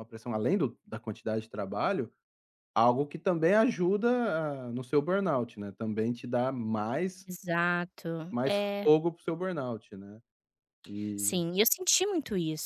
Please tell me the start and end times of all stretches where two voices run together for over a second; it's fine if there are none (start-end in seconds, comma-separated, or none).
none